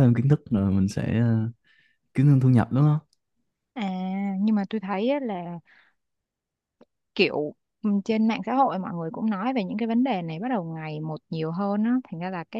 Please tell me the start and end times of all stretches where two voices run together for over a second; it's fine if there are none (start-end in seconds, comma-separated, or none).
none